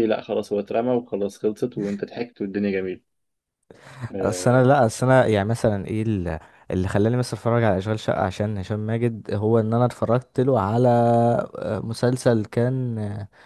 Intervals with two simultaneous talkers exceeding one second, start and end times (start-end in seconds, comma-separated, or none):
none